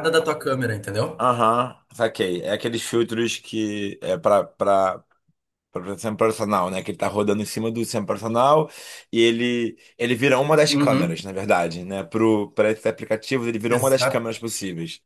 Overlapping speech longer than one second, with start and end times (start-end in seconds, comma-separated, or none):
none